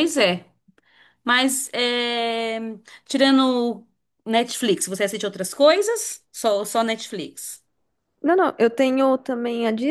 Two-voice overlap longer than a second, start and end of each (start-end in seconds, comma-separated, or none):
none